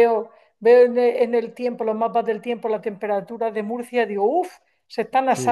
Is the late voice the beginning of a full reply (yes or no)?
yes